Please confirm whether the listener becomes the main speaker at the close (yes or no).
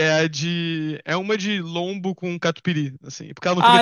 yes